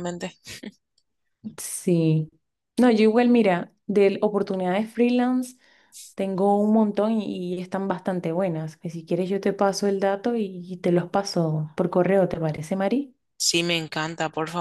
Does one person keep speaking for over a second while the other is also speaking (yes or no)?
no